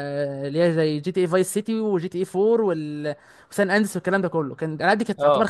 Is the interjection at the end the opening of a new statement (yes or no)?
no